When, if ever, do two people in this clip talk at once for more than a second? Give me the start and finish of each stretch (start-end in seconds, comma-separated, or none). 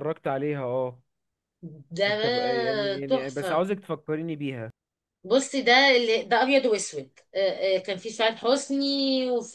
none